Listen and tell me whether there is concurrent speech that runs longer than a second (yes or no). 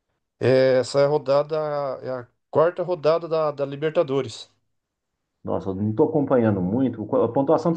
no